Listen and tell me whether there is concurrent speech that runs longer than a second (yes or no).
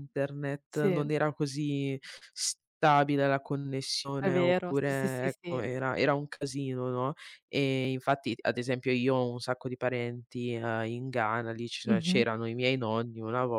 yes